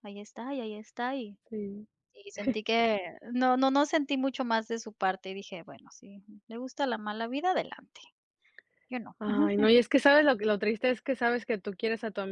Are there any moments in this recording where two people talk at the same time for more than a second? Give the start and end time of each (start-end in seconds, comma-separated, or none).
none